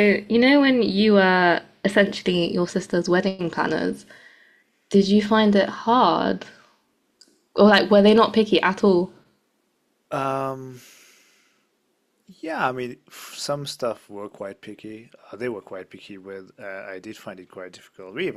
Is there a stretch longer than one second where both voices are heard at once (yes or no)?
no